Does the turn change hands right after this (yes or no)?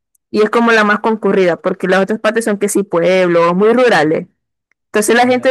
no